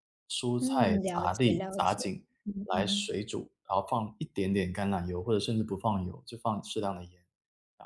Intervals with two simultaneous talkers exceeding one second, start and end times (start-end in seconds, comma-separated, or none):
0.6-2.0